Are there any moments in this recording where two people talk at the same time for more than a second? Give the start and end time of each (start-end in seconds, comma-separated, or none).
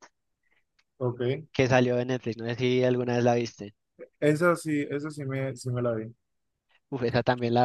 none